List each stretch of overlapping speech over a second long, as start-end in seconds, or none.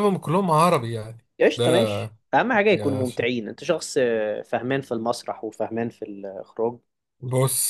none